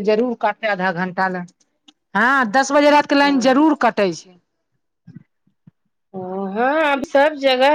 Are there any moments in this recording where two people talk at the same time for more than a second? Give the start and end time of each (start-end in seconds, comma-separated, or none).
none